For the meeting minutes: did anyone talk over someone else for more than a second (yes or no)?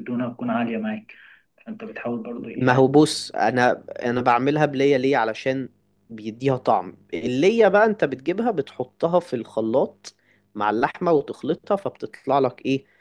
no